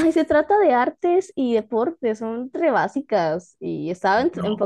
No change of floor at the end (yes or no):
no